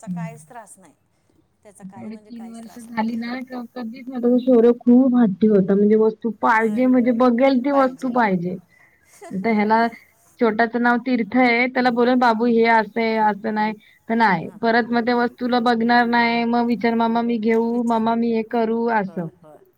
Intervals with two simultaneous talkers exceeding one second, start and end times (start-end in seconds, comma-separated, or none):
2.0-3.3